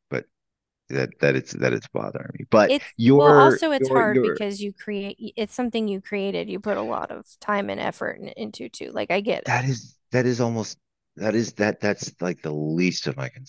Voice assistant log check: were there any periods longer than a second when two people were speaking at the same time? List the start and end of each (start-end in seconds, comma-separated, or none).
2.7-4.4